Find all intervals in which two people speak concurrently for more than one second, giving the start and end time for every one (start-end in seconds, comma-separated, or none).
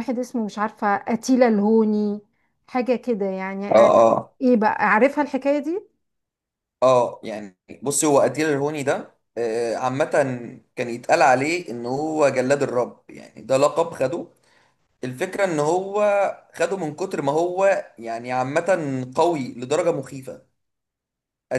none